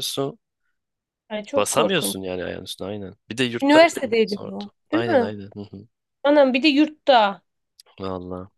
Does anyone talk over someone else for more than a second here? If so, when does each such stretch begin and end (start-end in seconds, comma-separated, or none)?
3.6-5.3